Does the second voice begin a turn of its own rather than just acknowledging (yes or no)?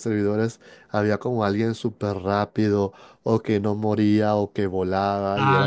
yes